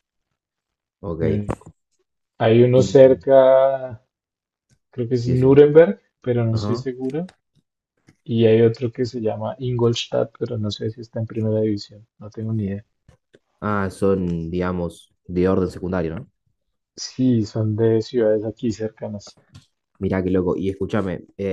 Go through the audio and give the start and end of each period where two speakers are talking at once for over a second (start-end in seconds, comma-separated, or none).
none